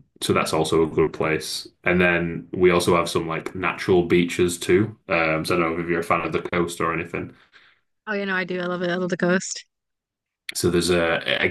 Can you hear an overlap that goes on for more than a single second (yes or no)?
no